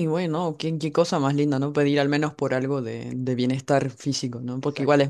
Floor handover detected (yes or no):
no